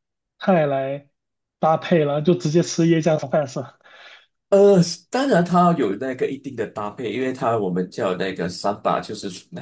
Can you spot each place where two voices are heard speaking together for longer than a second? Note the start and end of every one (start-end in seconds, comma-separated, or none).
none